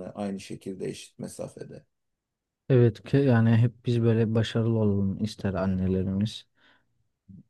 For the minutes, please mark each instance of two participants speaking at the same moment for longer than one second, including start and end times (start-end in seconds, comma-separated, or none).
none